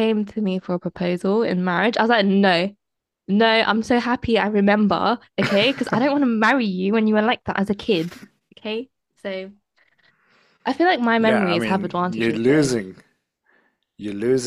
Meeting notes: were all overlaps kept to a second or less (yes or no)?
no